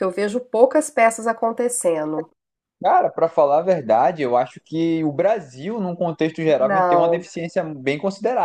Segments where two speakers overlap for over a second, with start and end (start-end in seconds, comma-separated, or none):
none